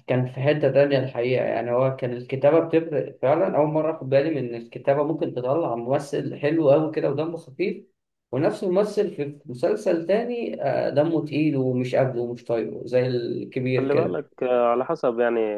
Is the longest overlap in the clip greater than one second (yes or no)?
no